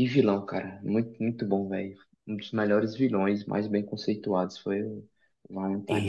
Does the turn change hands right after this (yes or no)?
yes